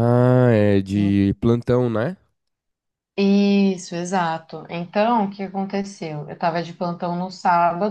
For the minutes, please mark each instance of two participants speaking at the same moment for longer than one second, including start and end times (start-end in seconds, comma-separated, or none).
none